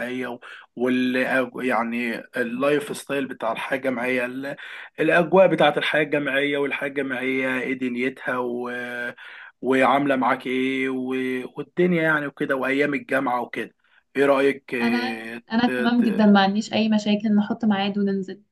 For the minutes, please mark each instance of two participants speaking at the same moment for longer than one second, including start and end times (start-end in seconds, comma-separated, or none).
14.8-16.2